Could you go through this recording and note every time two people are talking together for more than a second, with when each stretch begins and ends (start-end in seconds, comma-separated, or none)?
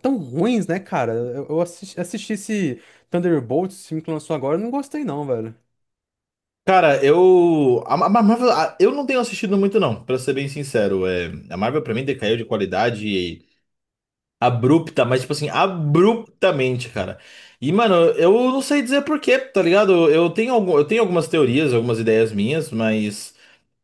none